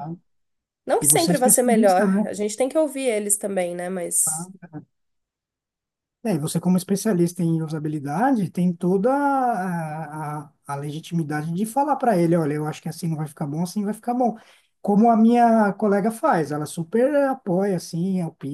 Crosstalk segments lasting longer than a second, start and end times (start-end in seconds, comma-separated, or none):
1.0-2.3